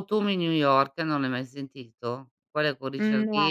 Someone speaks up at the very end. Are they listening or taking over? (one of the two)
listening